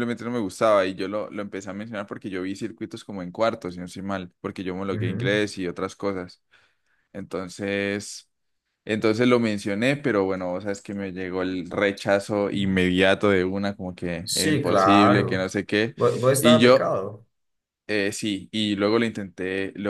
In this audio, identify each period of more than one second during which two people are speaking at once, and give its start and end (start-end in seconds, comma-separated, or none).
14.2-15.5